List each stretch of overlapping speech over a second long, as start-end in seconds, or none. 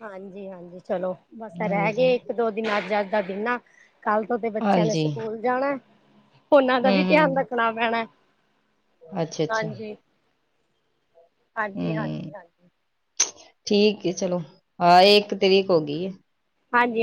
none